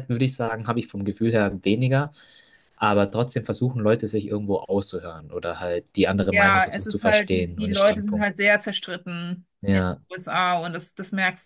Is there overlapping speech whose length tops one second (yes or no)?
yes